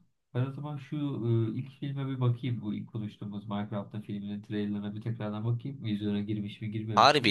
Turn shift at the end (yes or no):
yes